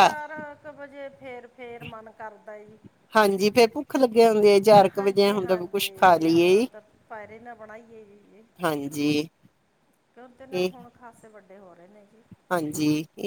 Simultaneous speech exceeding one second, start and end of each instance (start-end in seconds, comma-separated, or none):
5.0-6.7